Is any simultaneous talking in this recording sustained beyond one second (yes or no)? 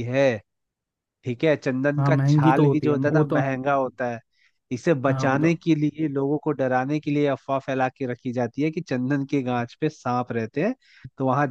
yes